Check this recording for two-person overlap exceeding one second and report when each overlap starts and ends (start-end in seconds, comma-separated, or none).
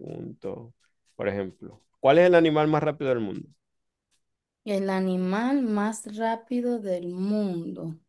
none